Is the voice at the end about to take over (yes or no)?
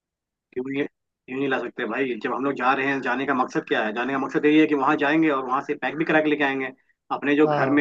no